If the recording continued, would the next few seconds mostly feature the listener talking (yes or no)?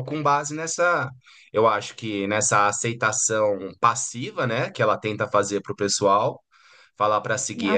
no